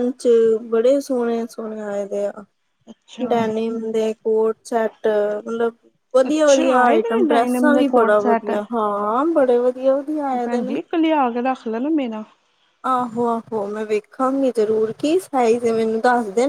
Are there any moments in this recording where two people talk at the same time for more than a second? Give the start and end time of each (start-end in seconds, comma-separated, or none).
6.3-8.1